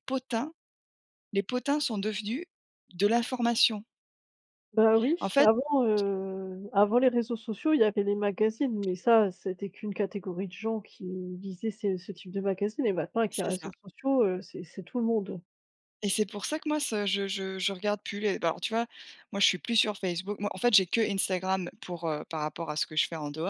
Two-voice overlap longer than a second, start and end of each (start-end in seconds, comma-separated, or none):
none